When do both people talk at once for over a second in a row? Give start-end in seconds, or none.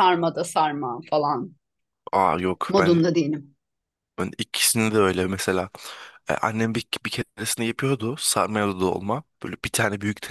none